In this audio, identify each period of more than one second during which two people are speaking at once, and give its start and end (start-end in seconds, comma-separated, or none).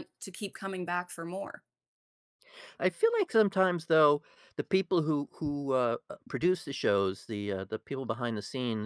none